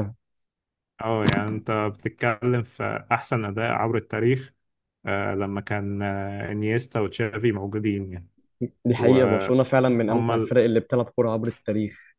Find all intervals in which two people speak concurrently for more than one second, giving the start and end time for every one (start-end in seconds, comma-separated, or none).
9.0-10.6